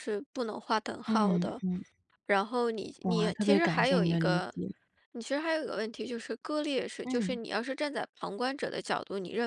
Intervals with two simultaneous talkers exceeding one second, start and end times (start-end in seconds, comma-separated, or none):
3.0-4.5